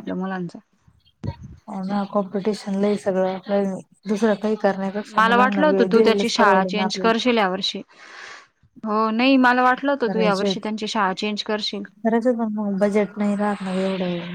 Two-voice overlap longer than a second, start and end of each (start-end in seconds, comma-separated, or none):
none